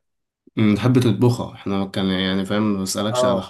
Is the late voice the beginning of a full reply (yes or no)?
no